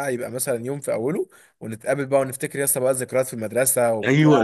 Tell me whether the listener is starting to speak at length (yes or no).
yes